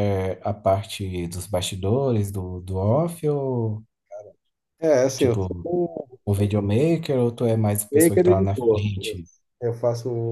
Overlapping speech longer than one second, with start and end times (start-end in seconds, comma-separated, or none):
7.9-9.2